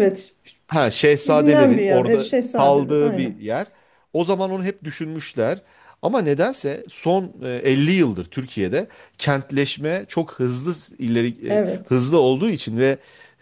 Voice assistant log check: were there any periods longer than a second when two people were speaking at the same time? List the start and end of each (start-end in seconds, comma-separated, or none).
1.2-3.4